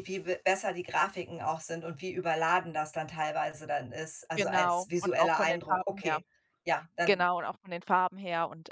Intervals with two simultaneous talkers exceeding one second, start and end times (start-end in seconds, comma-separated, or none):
4.3-6.2